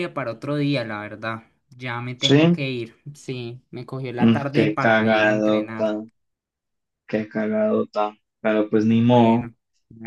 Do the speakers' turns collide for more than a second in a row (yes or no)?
yes